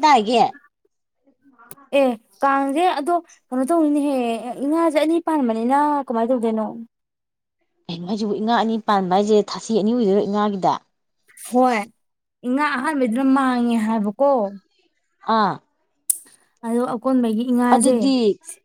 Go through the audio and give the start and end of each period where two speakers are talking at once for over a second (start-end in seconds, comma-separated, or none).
none